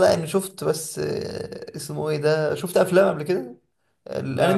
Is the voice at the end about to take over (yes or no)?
yes